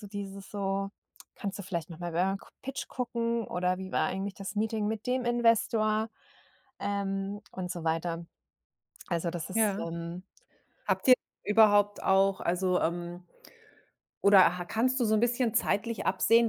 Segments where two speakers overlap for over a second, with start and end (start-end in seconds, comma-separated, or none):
none